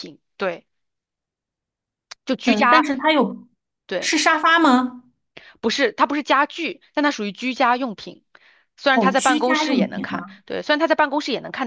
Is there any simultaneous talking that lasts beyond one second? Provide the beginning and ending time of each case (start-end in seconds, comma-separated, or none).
8.9-10.4